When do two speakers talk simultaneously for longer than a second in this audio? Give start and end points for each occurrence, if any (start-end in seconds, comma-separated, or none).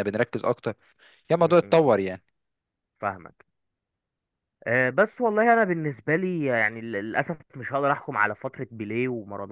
none